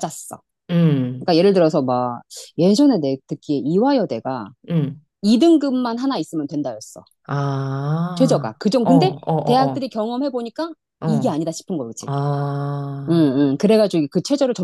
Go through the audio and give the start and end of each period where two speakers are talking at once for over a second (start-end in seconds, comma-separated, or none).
8.1-9.9